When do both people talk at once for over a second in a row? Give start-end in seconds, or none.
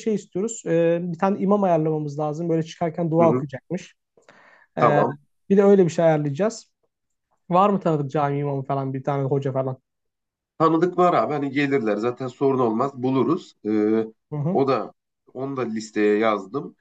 none